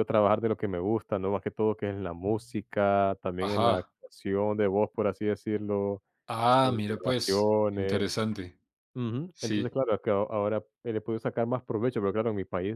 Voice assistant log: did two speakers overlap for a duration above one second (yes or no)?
yes